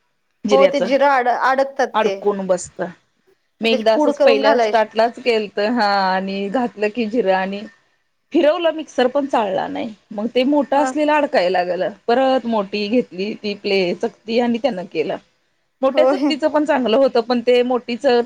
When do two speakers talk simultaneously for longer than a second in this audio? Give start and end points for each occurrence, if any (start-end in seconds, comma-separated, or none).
3.6-5.0